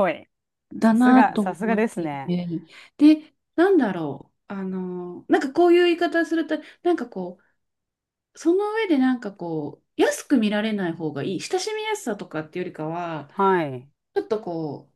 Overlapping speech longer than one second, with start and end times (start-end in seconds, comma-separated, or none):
0.8-2.3